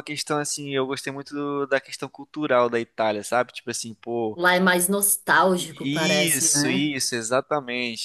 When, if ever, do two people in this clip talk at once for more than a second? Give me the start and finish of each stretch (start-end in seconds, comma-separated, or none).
5.5-6.9